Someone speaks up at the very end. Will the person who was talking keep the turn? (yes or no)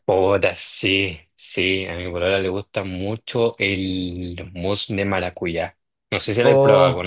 no